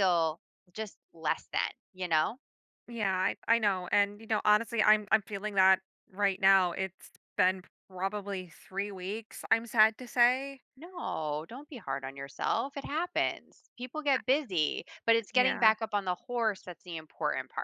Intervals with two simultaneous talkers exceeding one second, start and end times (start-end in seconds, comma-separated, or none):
none